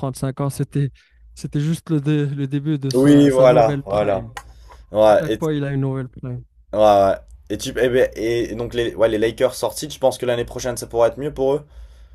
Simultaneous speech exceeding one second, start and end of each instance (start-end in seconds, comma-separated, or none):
2.9-4.3